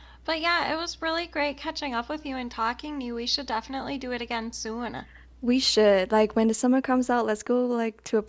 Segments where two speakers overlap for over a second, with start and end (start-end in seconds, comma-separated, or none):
none